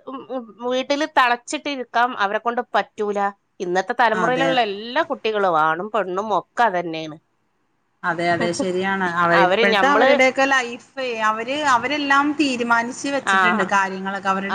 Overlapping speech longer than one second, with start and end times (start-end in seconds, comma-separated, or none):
none